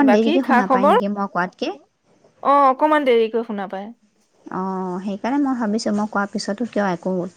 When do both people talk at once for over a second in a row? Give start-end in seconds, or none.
none